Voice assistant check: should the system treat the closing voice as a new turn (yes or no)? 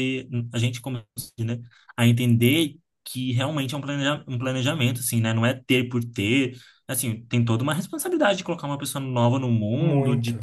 no